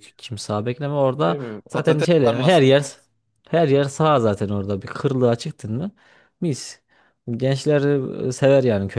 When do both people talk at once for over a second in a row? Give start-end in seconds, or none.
1.2-2.8